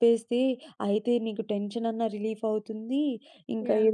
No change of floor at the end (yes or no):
yes